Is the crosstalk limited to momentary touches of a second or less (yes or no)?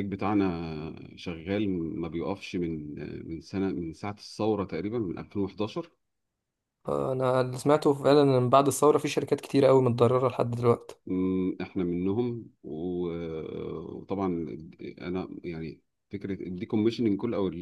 yes